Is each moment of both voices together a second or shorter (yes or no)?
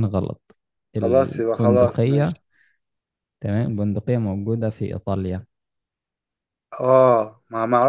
no